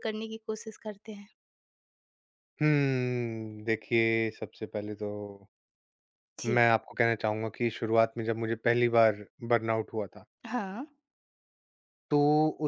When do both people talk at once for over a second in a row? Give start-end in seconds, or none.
none